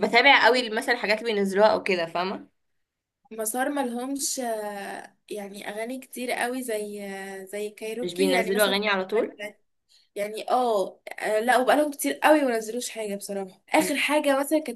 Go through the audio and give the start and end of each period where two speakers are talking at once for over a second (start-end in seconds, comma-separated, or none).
8.0-9.4